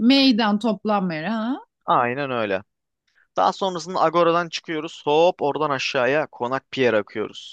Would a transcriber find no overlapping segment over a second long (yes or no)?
yes